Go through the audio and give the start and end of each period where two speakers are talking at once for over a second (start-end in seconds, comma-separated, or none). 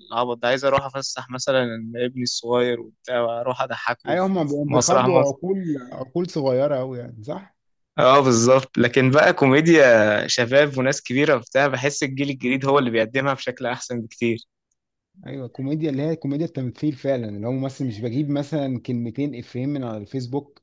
4.1-5.3